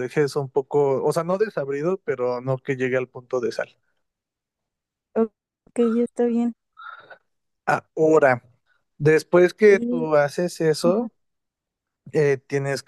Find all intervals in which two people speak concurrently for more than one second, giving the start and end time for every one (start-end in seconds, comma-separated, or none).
none